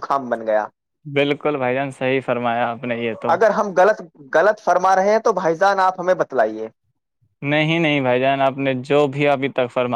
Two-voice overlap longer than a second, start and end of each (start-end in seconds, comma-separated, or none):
none